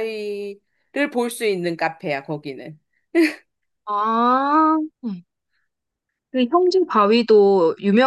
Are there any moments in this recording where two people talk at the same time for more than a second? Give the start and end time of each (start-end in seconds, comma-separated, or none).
none